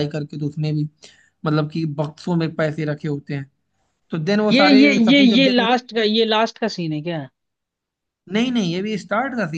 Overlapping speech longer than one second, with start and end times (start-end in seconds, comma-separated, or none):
4.5-5.8